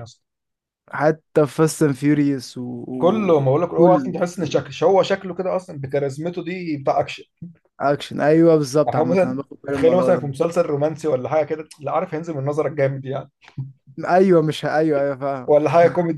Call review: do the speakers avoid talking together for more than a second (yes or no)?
no